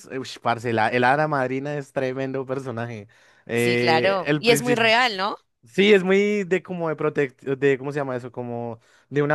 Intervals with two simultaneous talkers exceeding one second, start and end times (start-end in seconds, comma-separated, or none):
3.5-4.9